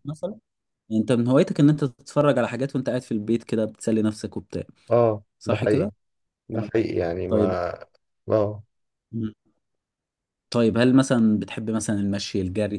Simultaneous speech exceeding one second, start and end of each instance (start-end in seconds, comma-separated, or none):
none